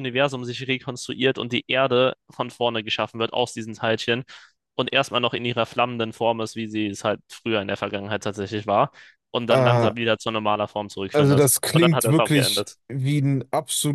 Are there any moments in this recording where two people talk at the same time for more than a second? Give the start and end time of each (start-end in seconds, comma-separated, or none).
11.1-12.8